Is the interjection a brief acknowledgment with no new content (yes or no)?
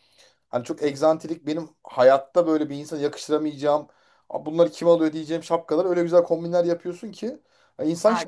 no